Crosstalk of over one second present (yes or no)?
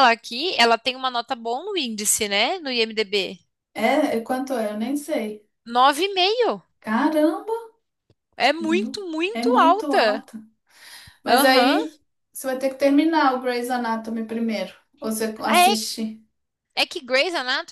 yes